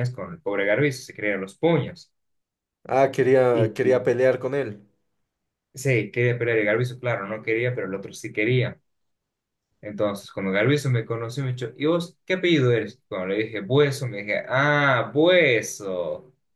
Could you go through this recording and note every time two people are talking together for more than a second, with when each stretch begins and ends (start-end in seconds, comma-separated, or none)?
none